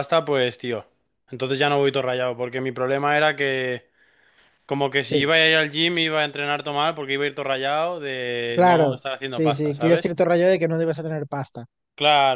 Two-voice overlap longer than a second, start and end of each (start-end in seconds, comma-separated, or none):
8.5-10.1